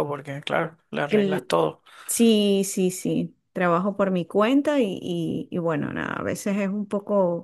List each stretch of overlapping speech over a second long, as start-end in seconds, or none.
none